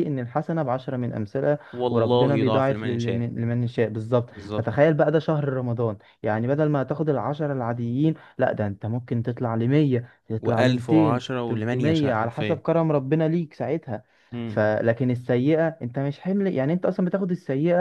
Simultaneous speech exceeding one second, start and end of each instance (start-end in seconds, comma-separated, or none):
1.7-3.2, 10.4-12.6